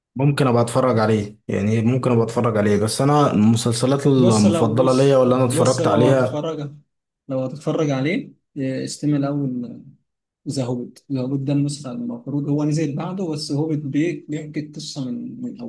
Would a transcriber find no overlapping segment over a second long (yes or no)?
no